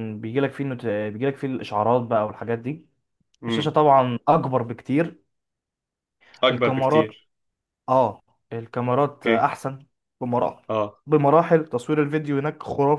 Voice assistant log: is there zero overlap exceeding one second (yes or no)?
yes